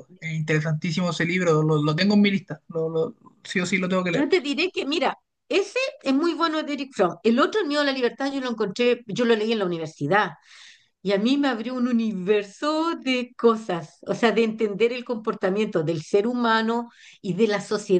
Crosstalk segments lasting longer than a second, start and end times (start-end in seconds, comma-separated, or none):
none